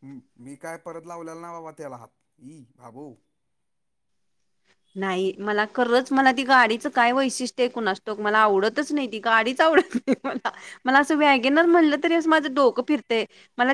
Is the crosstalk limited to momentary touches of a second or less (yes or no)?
yes